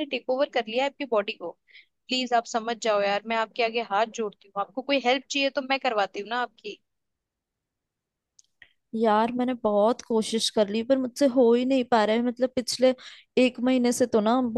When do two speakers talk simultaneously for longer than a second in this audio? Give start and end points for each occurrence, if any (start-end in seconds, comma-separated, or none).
none